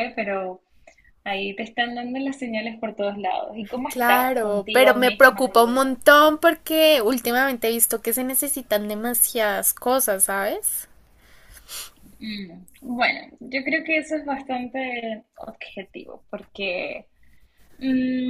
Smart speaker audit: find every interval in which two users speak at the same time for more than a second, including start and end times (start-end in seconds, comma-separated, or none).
3.9-5.9